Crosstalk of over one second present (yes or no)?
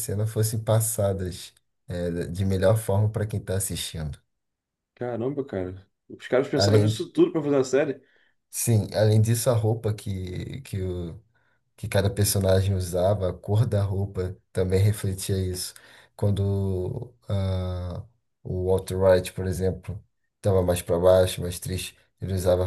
no